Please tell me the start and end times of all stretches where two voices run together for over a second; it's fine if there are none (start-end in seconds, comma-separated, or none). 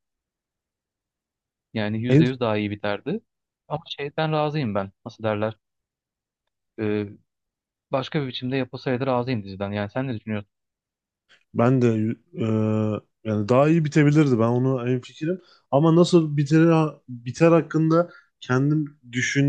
none